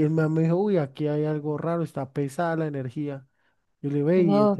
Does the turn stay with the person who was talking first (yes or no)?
yes